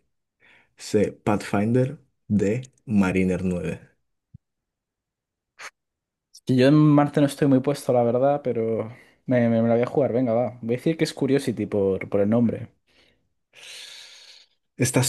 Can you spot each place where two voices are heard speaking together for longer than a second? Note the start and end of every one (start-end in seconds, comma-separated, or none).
none